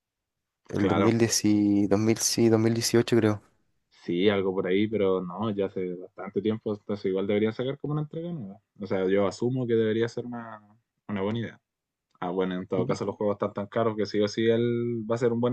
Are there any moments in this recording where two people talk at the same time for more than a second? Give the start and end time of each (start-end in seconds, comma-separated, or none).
none